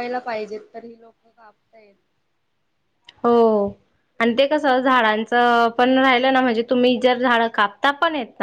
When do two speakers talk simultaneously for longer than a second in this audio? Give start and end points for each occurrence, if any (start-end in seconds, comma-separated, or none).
none